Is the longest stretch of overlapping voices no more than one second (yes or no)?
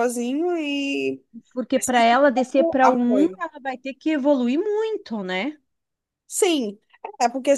no